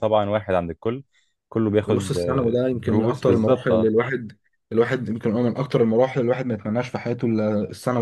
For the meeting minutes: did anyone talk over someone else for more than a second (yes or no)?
yes